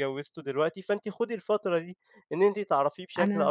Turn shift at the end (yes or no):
no